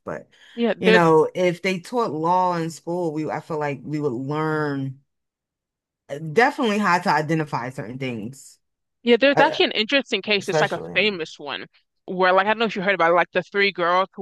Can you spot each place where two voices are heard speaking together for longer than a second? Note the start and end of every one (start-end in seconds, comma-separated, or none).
none